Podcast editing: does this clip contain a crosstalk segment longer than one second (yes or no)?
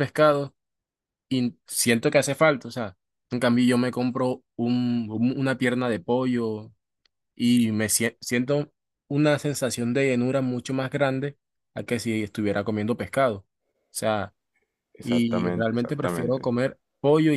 yes